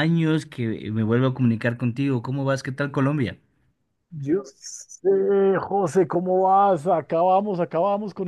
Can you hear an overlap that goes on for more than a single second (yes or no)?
no